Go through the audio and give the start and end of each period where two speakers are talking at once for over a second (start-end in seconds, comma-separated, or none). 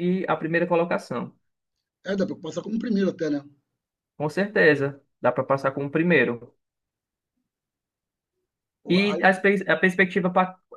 none